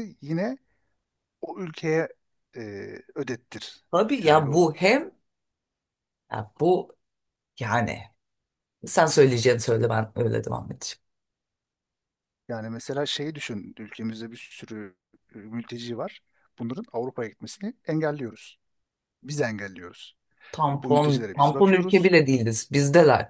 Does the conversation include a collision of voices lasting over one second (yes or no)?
yes